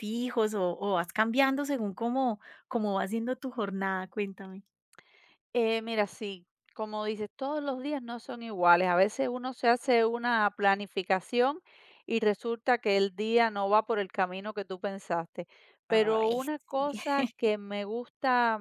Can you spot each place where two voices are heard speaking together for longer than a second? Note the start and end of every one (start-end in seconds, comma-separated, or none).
15.9-17.2